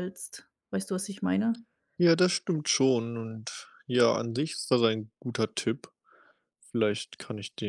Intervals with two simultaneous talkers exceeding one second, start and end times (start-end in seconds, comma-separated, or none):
none